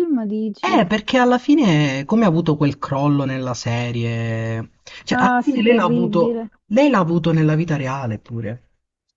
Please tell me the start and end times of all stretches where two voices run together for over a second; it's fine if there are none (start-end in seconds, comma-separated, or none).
5.1-6.5